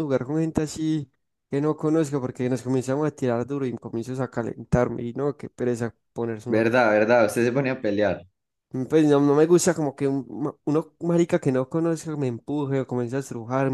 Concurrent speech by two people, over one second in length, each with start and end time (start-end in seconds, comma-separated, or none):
none